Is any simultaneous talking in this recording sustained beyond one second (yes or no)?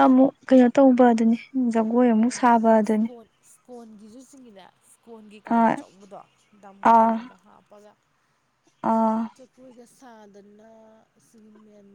no